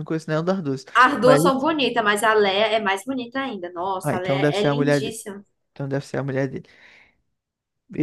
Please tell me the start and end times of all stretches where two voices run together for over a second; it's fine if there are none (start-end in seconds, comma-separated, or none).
4.0-5.2